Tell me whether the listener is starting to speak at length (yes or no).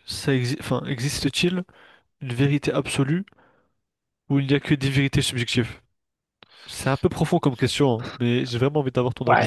yes